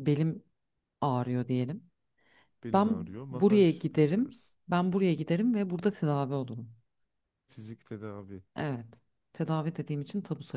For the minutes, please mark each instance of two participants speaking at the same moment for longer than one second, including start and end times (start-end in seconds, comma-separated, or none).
2.7-4.5